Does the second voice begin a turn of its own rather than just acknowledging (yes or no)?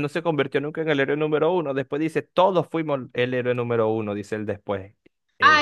yes